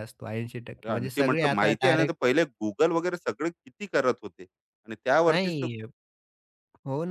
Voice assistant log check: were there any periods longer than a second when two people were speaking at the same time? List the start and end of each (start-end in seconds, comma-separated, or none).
0.8-2.3